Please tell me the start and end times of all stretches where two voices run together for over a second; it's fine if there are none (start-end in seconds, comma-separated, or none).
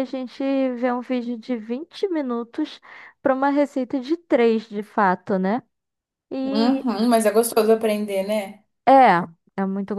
none